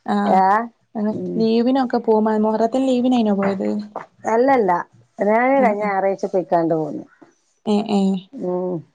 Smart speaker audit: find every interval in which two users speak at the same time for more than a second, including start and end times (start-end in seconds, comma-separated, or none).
none